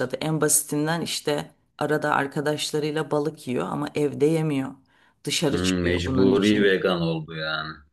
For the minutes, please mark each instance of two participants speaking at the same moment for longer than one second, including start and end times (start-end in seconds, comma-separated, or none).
5.5-6.8